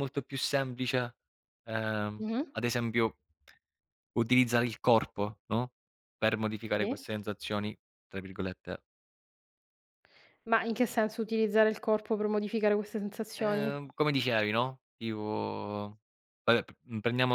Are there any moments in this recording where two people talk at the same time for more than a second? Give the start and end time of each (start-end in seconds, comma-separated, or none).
none